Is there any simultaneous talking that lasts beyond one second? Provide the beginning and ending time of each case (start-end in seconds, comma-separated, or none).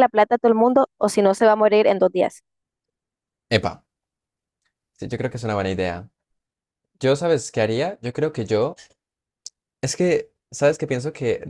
none